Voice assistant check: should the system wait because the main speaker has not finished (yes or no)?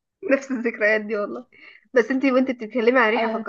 yes